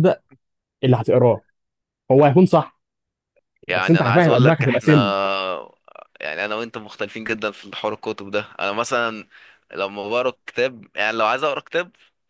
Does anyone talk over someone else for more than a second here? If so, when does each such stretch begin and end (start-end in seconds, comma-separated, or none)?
3.7-4.9